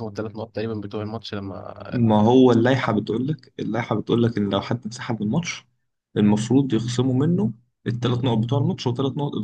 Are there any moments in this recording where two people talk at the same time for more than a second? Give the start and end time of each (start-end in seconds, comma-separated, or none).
none